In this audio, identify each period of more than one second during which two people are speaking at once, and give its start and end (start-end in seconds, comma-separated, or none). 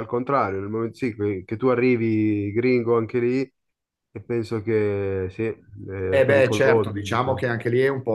6.1-7.4